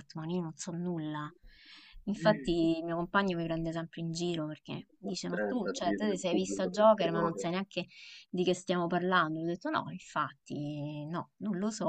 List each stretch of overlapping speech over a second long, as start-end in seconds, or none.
5.1-7.5